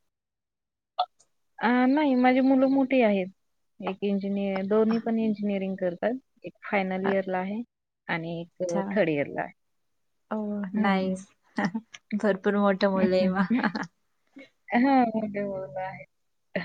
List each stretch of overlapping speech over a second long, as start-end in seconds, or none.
none